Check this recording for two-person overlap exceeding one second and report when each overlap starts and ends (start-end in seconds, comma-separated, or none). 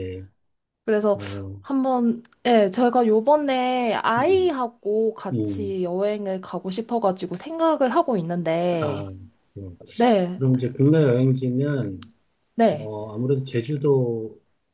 none